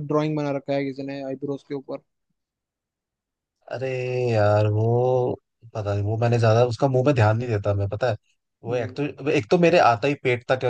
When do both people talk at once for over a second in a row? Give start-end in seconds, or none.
none